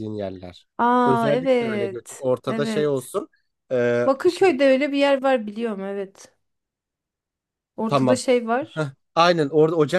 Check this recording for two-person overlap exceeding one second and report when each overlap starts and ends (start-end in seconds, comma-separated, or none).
1.1-3.1